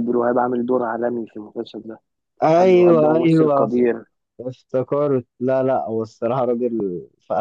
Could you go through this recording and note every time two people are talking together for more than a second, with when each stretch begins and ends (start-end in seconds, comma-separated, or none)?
2.4-3.7